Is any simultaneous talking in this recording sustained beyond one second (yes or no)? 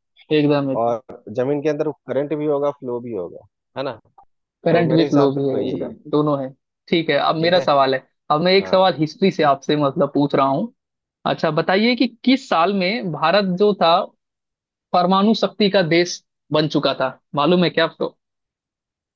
yes